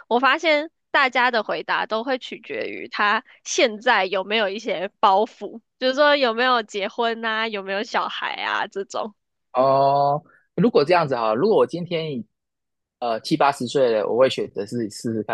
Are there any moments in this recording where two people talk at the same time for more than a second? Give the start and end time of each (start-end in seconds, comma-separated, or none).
none